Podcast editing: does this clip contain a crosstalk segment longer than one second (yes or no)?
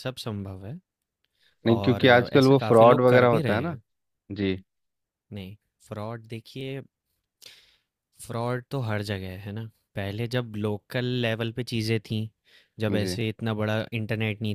yes